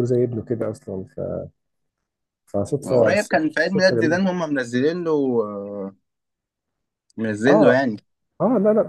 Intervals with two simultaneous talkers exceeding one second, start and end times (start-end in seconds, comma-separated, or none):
2.9-4.2